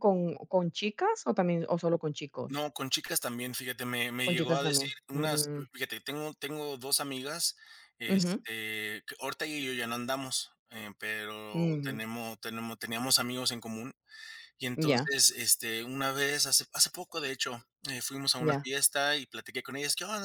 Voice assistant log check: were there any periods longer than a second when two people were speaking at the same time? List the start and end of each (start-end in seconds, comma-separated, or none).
4.2-5.6